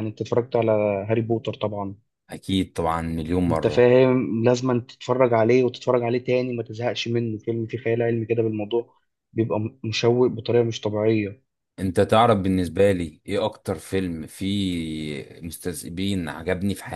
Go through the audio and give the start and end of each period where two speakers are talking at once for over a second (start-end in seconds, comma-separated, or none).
none